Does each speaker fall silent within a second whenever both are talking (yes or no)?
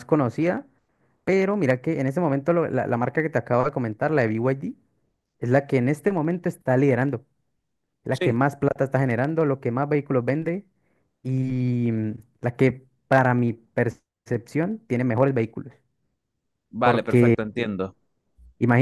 yes